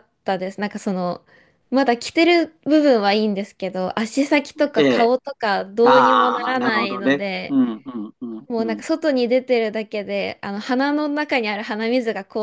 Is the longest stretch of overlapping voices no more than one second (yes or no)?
no